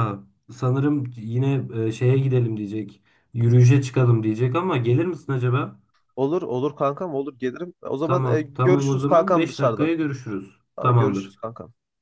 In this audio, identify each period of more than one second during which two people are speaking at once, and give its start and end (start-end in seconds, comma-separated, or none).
8.0-9.9